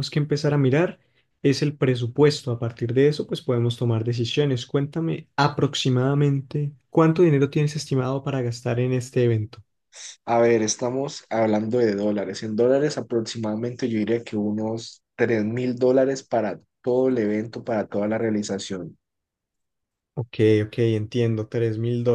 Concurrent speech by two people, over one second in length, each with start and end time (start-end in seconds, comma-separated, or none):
none